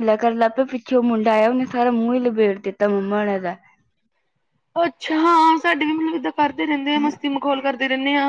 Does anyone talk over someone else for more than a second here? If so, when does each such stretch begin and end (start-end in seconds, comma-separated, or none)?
none